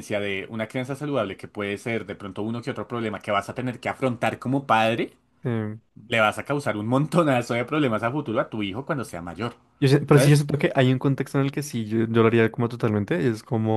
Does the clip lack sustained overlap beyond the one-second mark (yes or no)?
yes